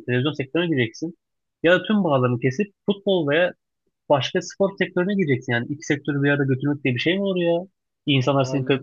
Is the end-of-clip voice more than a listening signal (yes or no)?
no